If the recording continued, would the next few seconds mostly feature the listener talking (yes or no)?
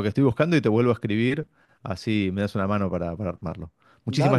yes